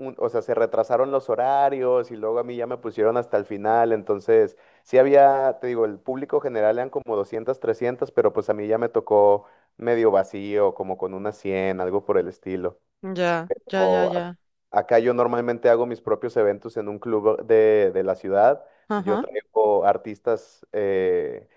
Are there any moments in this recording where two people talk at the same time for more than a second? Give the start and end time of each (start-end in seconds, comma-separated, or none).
none